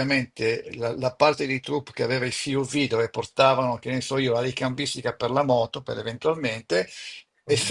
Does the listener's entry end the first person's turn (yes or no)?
no